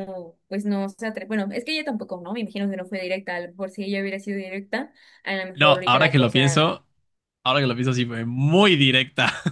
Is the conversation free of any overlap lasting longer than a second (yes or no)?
no